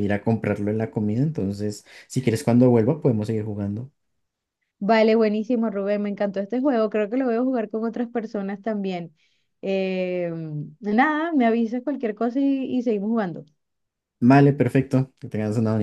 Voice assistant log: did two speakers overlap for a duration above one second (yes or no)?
no